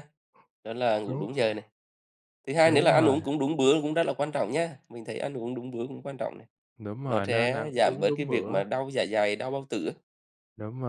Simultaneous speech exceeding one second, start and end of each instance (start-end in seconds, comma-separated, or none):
7.1-8.6